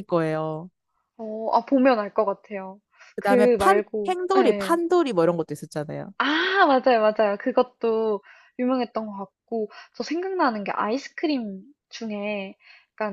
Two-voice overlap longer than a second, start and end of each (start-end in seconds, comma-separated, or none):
3.2-4.8